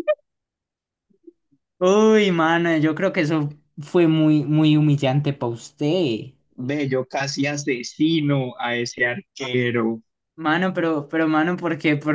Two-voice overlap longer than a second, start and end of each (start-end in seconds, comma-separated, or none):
none